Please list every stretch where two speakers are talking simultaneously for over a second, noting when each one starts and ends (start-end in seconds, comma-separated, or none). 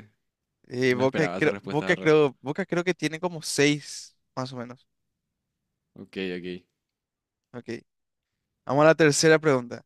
0.9-2.1